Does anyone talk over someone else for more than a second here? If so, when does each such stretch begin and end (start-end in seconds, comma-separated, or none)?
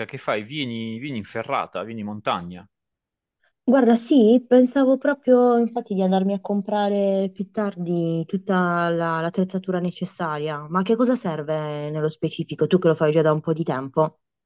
none